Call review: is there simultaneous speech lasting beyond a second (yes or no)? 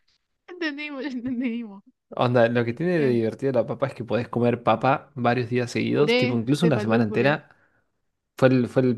yes